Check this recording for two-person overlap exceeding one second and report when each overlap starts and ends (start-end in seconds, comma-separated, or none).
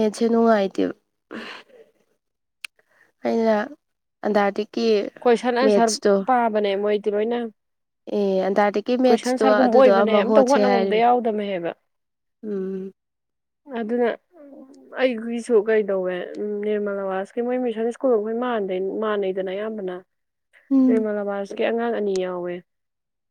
9.1-10.9